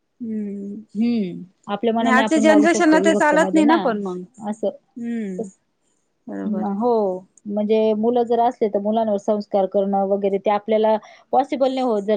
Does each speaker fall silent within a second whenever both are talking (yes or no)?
no